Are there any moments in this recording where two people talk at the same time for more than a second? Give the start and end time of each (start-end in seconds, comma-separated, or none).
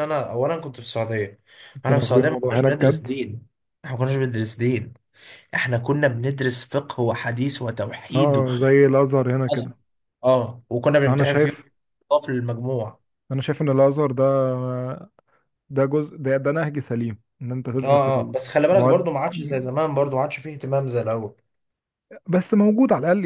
1.9-3.1